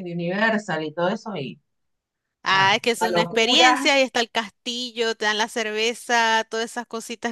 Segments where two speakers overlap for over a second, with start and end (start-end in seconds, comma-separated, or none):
2.5-3.9